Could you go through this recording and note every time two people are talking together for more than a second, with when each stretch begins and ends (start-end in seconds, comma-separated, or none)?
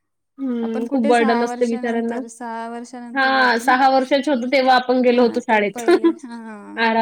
0.7-2.2, 4.3-5.8